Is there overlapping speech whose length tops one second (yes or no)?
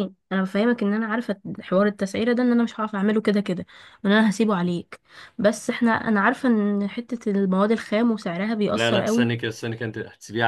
no